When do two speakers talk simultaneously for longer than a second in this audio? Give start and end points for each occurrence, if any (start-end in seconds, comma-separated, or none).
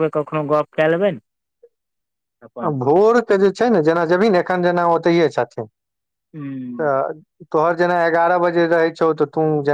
none